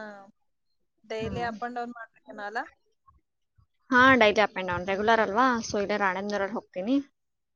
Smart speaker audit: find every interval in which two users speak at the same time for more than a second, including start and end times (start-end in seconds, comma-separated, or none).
none